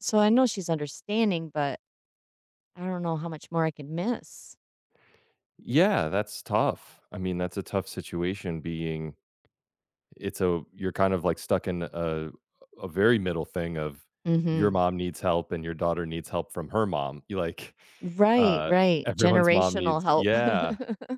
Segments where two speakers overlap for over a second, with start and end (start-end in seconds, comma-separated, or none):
18.3-20.3